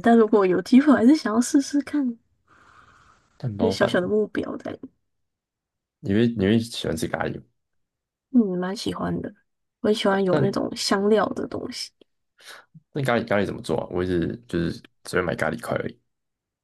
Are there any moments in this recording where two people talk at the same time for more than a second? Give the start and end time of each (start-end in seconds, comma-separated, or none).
none